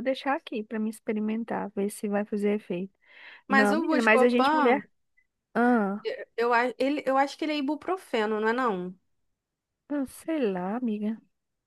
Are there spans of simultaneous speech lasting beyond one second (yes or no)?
yes